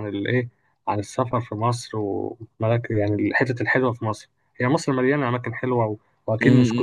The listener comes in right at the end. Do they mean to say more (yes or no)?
yes